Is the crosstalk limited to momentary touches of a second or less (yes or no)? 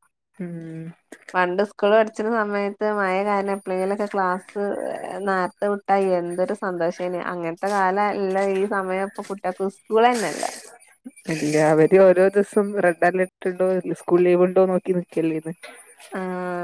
yes